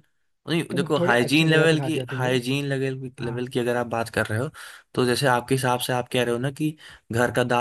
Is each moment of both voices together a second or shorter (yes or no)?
no